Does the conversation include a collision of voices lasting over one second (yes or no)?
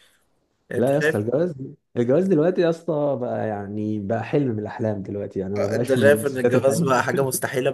yes